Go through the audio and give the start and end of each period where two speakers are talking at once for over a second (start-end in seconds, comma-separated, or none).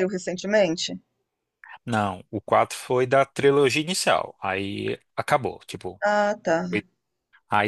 none